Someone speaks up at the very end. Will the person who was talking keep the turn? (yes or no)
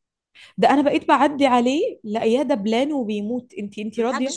no